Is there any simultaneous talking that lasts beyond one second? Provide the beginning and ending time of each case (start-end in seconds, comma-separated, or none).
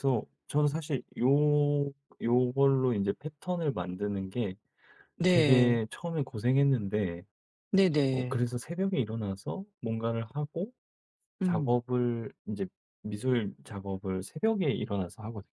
none